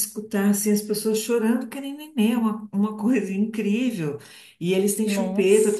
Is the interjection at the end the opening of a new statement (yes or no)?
no